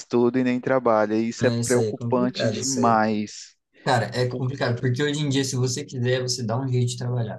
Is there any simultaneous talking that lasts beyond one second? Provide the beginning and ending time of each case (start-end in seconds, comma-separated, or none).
1.4-3.0